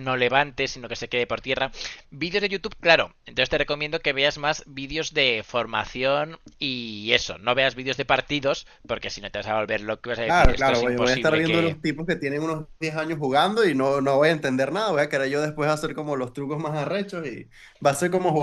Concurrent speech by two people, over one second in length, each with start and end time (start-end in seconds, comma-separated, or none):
10.2-11.8